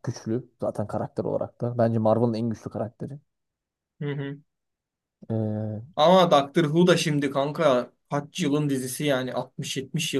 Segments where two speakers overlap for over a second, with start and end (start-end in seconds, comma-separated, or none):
none